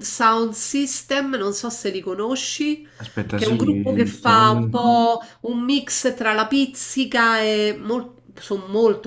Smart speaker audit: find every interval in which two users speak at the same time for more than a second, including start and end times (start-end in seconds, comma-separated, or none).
3.3-4.9